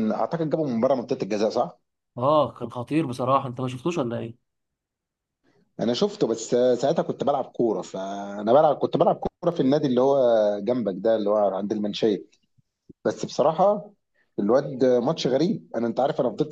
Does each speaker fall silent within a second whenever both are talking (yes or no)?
yes